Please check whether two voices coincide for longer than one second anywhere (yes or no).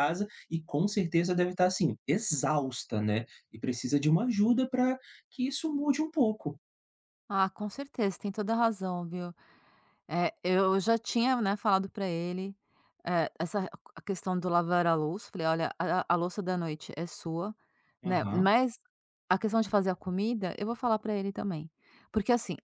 no